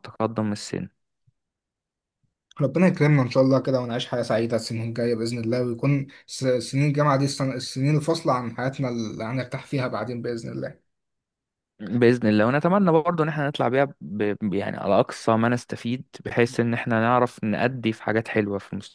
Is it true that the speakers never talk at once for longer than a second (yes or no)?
yes